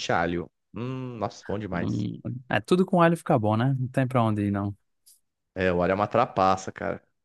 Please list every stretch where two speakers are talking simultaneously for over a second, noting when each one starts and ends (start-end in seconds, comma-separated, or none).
none